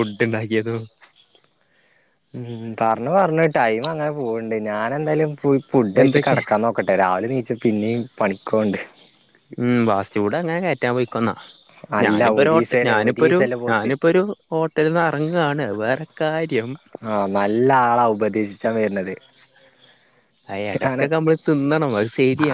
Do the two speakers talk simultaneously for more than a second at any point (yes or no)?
yes